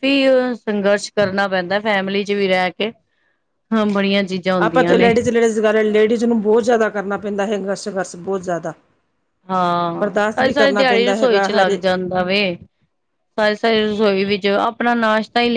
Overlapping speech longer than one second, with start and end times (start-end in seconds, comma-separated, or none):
10.0-11.8